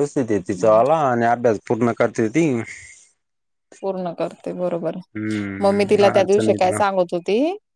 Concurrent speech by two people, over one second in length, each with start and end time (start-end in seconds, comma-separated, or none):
5.0-6.8